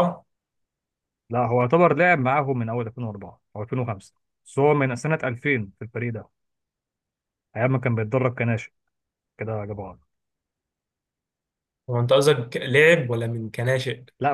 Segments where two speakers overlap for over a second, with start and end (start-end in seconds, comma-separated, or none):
none